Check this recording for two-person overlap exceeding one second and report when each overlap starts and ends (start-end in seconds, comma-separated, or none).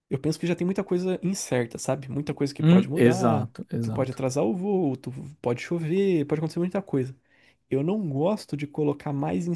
2.6-4.2